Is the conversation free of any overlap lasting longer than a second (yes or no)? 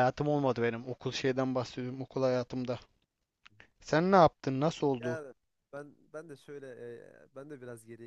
yes